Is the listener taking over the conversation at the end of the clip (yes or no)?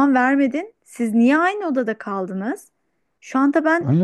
yes